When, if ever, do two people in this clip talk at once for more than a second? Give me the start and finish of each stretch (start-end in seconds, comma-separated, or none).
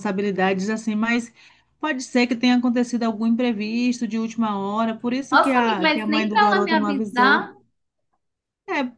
5.3-7.5